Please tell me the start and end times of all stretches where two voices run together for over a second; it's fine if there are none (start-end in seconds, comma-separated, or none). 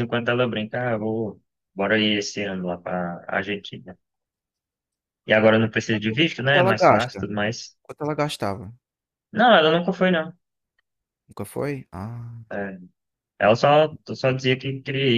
5.9-7.2